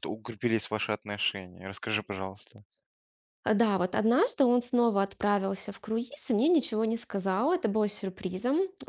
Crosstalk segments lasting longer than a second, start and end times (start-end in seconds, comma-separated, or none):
none